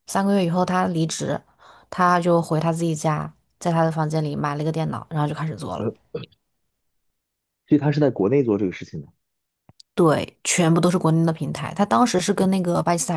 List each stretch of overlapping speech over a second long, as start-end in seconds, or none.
none